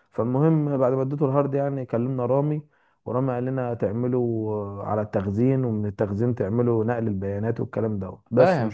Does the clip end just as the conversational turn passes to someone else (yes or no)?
yes